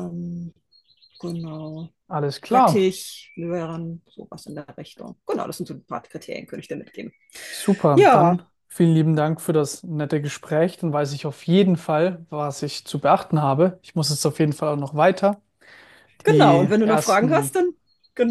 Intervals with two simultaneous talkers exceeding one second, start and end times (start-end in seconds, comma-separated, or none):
16.3-17.5